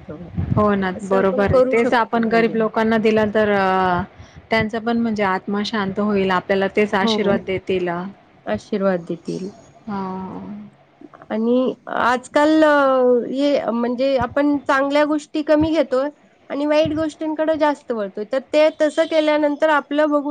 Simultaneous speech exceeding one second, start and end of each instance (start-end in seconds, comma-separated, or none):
1.0-2.5